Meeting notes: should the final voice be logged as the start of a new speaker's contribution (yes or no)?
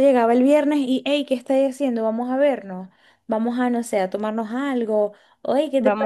yes